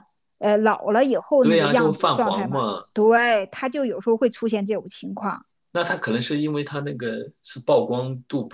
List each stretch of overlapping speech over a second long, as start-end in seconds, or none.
1.4-2.8